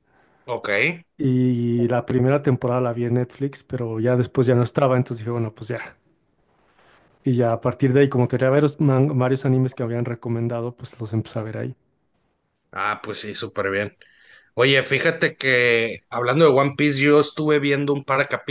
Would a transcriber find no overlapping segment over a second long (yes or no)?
yes